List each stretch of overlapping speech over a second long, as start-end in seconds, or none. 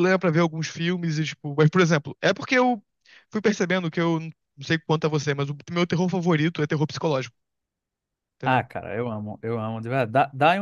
none